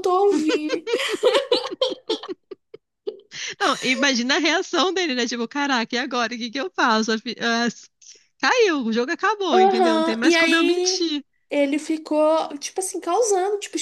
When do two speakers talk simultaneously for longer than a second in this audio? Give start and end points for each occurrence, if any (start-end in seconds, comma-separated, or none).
9.5-11.1